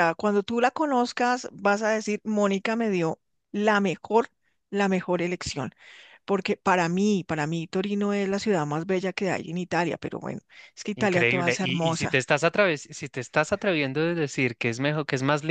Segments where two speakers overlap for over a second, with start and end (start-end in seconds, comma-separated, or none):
10.9-12.2